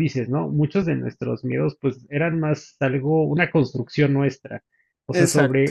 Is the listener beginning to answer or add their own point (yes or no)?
no